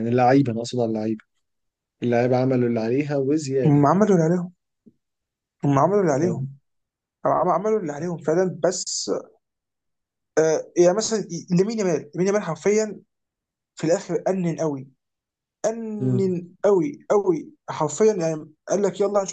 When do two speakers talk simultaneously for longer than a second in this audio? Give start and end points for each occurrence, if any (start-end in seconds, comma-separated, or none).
none